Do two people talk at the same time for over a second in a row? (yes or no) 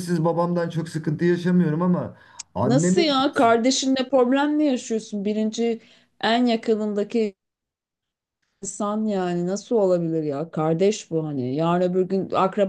no